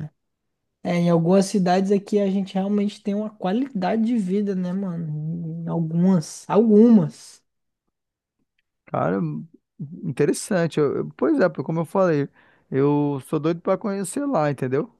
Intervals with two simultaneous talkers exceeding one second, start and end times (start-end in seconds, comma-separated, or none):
none